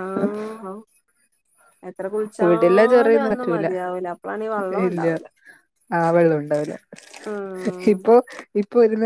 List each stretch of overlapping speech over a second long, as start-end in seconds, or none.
2.4-3.7